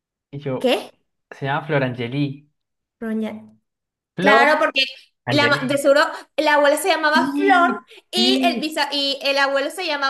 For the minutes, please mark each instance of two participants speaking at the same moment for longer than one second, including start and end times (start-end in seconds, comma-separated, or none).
7.1-8.7